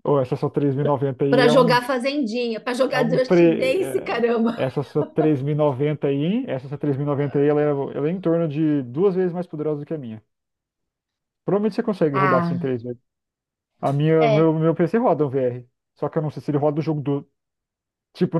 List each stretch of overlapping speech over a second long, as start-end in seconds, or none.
2.9-4.6